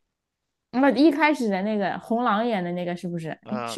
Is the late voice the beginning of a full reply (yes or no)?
yes